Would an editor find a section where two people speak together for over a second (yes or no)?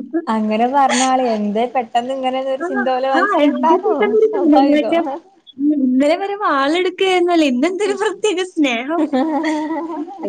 yes